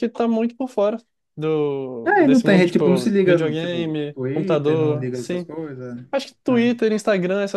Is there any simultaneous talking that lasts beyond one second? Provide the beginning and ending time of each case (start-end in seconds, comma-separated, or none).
2.0-5.5